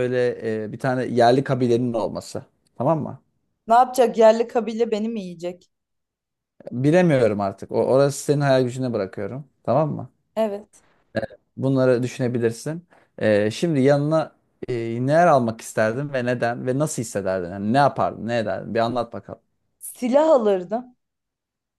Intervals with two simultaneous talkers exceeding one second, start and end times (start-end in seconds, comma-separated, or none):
none